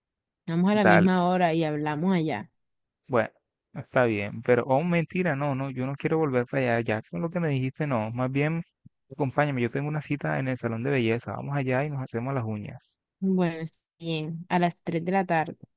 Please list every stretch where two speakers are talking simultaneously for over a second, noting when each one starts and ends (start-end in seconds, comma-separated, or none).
none